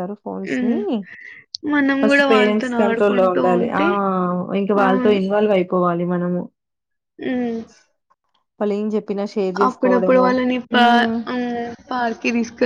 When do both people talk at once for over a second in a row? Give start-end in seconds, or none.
2.0-3.8